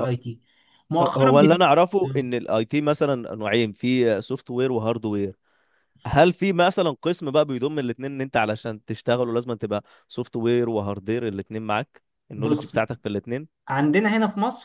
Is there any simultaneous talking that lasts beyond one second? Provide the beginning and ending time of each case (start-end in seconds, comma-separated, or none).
none